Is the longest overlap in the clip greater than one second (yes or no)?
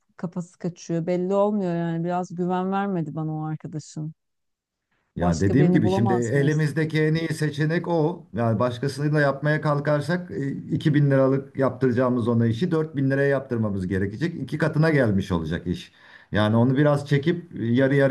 yes